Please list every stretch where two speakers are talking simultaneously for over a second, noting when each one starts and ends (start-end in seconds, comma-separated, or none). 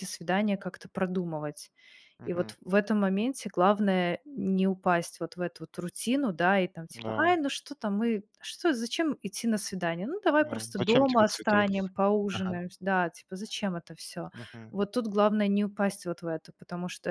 10.4-11.7